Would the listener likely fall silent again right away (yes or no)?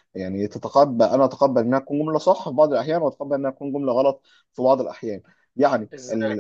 yes